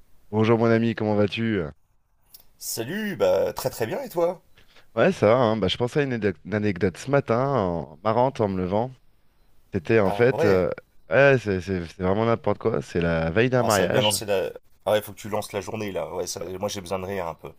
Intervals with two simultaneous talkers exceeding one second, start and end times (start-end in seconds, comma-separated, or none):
none